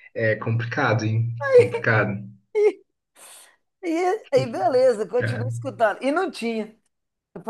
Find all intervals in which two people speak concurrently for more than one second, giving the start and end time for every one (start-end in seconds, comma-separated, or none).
none